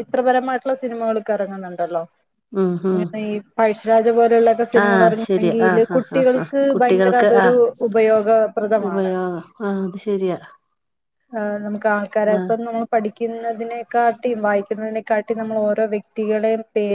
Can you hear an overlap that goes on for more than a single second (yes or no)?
yes